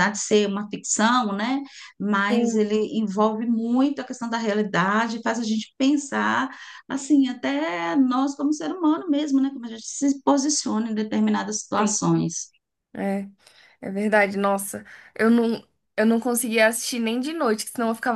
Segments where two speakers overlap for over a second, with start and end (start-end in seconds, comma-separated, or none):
none